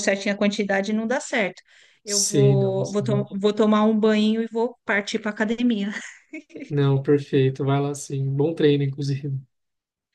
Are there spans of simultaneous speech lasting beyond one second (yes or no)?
yes